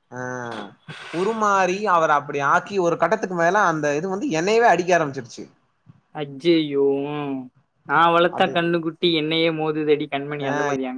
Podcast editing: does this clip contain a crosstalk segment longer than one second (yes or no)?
no